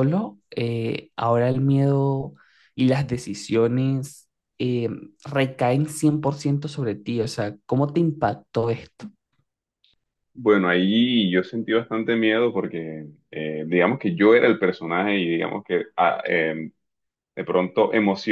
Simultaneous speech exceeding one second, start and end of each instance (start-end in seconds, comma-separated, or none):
none